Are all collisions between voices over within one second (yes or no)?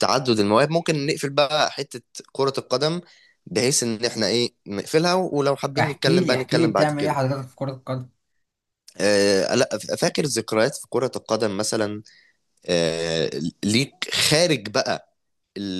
no